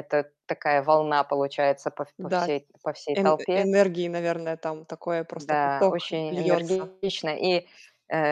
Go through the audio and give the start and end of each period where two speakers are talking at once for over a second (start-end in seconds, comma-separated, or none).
5.4-6.9